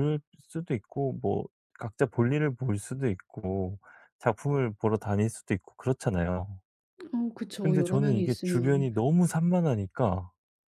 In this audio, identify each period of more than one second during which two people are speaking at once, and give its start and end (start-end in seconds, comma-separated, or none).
7.6-8.9